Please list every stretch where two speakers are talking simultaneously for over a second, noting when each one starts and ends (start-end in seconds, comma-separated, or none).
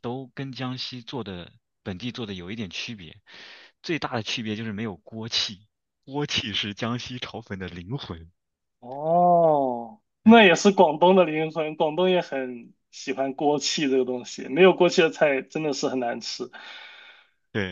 none